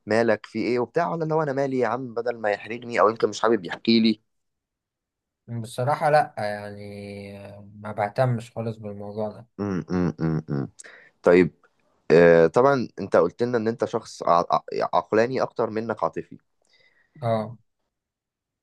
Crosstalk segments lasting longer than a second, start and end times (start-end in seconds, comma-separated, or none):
none